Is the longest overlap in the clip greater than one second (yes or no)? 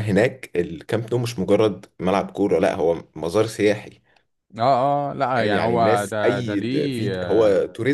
yes